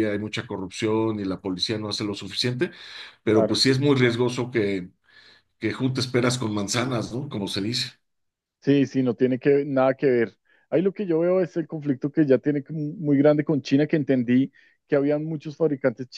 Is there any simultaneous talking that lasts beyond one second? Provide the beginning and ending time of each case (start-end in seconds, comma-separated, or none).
none